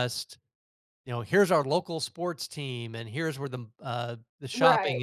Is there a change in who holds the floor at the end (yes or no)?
no